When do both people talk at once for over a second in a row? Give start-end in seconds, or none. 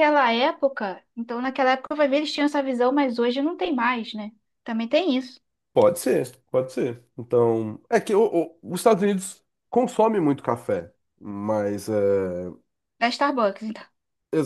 none